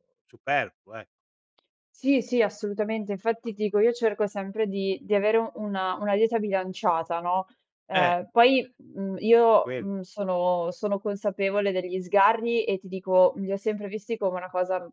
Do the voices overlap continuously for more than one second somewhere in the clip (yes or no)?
no